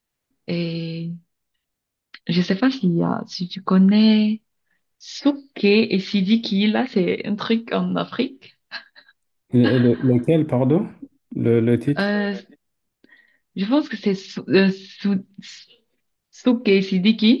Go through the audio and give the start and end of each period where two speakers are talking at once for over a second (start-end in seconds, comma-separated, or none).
none